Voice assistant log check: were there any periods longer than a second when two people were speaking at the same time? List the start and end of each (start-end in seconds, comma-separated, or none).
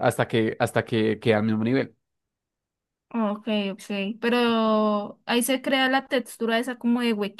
none